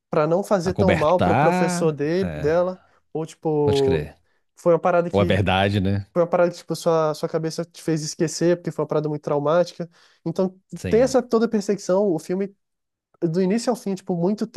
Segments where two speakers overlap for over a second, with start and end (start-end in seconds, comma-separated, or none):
0.6-2.5